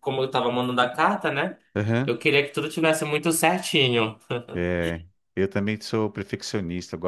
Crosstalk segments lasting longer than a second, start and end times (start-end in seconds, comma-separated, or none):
none